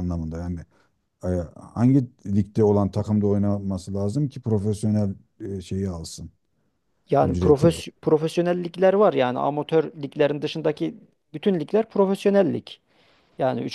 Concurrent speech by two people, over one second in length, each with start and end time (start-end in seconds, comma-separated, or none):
none